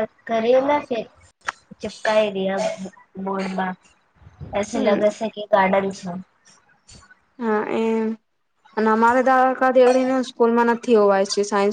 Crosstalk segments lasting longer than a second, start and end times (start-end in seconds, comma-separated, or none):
none